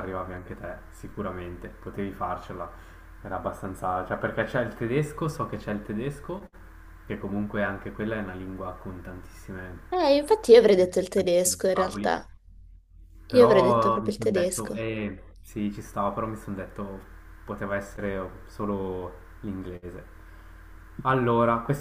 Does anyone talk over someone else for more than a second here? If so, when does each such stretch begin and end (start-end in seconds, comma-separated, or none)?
10.8-12.1, 13.3-14.8